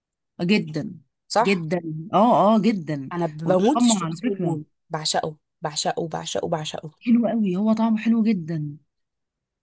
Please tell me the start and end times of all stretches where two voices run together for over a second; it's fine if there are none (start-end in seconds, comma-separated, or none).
3.1-4.6